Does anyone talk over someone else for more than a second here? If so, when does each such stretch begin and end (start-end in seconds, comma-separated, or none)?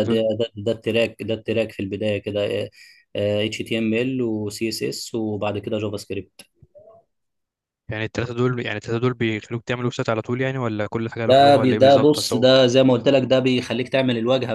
11.3-12.5